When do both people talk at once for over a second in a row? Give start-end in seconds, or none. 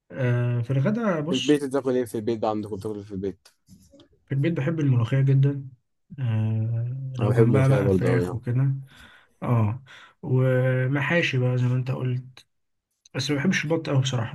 7.2-8.4